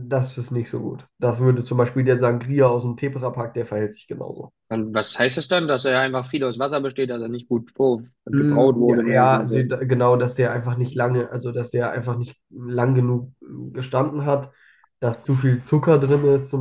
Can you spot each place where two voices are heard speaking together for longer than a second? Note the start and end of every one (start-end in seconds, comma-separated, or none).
8.3-9.7